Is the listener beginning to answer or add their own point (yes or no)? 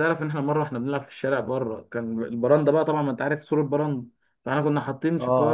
no